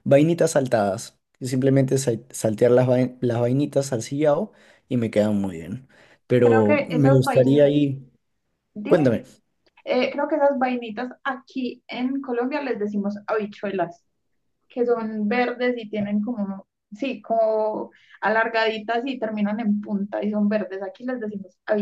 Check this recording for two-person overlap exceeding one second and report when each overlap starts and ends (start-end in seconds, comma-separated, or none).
6.4-7.7